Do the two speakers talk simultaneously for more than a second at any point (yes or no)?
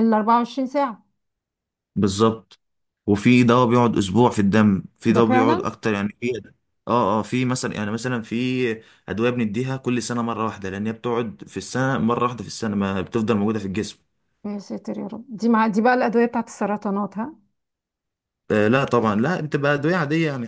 no